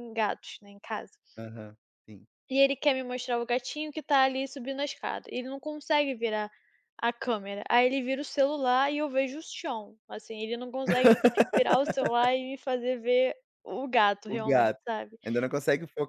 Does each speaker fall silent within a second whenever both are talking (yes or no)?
yes